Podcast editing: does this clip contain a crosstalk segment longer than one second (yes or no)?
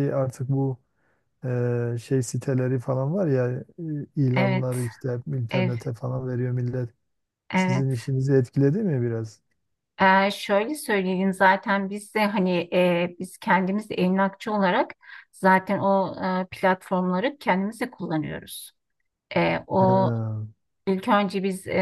no